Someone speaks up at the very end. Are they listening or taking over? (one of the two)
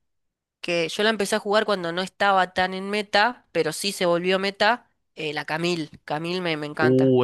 taking over